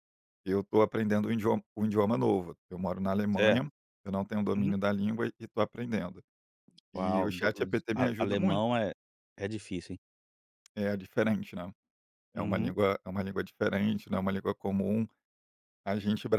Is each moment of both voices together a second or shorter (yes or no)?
no